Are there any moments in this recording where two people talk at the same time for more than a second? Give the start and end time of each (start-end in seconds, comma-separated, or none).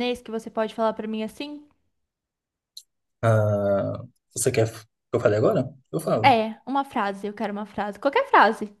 none